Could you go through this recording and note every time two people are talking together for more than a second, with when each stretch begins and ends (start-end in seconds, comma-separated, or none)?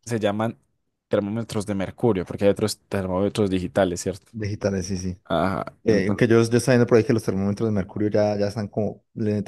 none